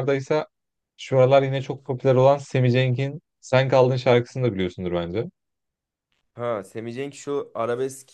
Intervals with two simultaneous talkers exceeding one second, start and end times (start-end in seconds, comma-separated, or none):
none